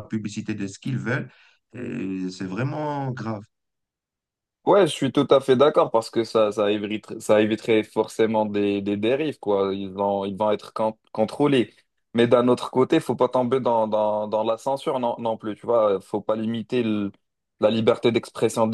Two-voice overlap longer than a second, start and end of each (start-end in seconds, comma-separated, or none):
none